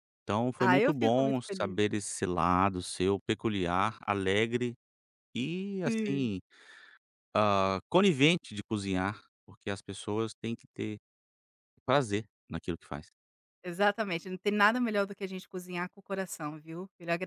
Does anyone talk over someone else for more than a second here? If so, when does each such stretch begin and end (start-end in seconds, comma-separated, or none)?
0.6-1.8